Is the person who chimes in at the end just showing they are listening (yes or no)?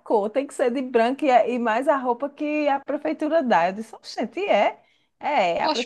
no